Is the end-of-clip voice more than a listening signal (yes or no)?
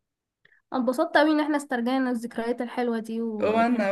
yes